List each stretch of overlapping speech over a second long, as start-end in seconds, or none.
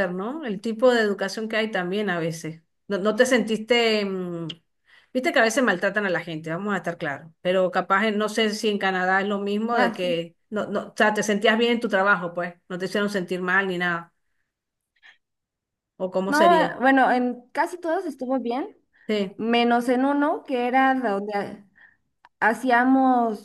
none